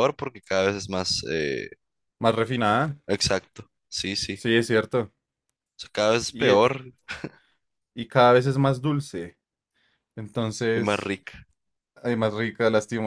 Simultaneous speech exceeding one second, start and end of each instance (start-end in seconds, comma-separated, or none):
none